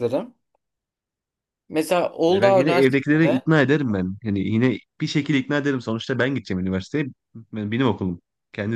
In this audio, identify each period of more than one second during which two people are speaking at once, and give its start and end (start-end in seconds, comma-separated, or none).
2.3-3.5